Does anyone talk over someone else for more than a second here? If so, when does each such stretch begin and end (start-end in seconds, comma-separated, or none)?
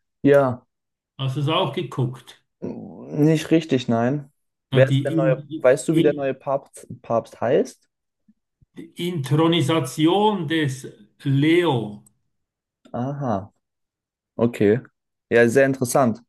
4.7-6.3